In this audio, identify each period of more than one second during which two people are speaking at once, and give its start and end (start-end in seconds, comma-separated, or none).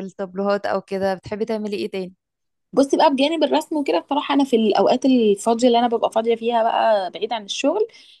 none